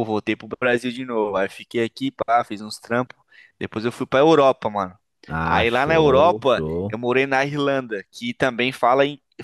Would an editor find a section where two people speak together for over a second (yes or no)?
yes